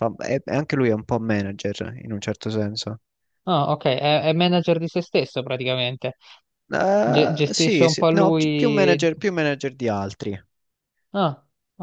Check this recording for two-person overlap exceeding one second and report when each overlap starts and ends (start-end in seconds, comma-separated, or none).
7.0-9.0